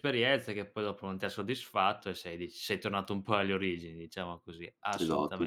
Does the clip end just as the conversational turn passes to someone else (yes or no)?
no